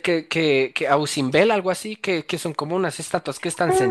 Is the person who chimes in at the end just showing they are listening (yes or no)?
no